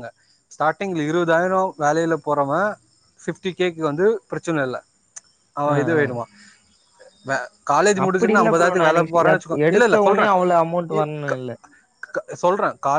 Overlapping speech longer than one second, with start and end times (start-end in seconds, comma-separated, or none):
8.0-10.2